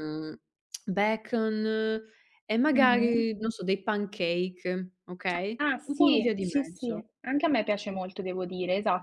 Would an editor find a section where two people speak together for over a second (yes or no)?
yes